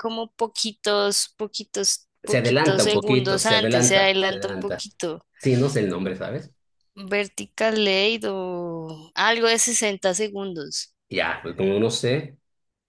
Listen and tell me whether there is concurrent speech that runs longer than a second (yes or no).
yes